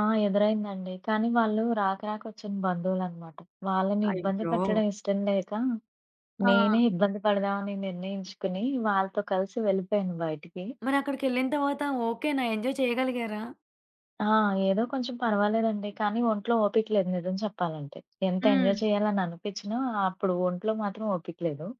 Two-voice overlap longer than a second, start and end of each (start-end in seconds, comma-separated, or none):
none